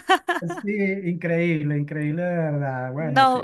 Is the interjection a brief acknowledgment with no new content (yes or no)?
yes